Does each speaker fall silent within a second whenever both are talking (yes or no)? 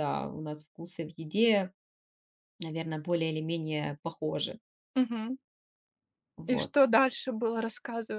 yes